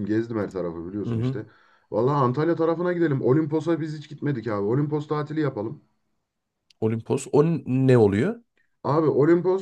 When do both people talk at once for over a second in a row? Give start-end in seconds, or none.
none